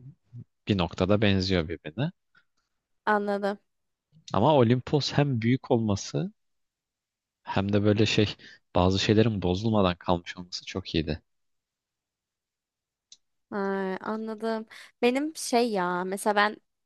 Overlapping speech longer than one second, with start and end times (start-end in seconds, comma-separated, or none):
none